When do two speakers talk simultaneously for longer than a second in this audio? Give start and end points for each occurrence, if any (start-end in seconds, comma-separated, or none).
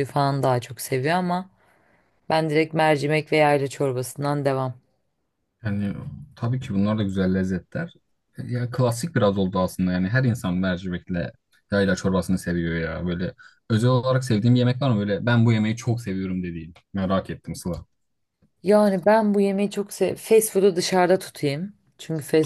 none